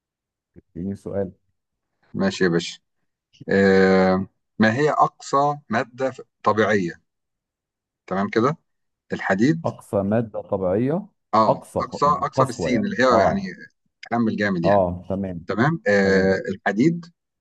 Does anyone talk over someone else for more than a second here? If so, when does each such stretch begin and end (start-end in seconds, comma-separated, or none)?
11.5-13.4